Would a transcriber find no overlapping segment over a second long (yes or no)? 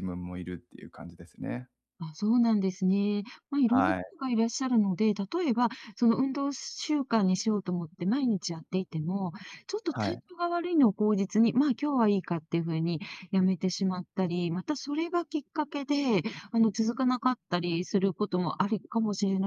yes